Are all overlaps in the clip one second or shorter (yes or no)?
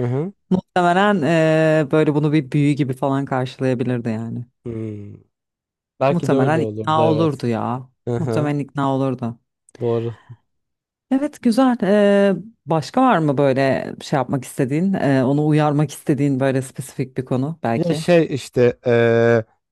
no